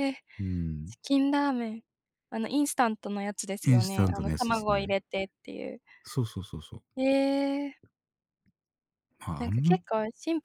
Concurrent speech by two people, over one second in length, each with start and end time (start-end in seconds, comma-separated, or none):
3.6-4.9